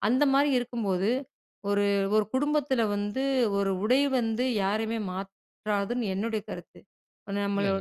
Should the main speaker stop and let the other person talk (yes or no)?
no